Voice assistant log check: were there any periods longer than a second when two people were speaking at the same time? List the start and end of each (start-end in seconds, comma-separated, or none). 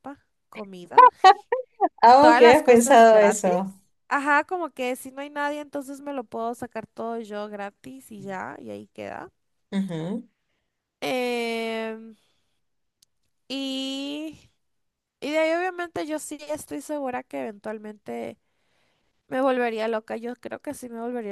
2.2-3.5